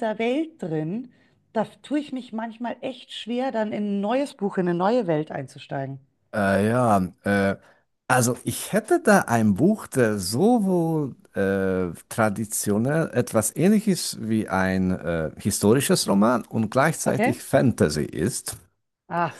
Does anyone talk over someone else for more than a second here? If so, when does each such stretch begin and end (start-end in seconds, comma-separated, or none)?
none